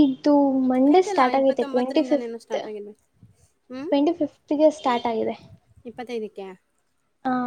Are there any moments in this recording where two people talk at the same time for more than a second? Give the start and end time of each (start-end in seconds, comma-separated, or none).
0.9-2.6